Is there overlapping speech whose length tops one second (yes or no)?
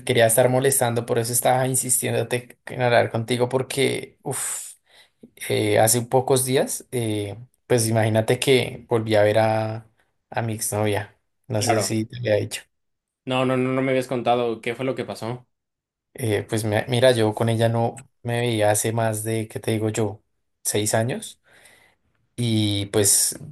no